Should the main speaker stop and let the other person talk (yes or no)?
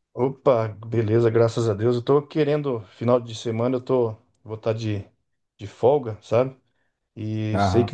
no